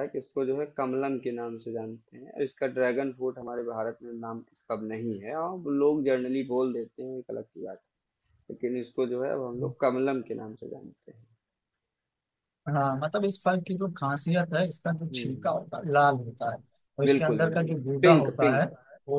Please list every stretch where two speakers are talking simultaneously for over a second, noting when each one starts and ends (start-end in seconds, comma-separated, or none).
17.1-18.6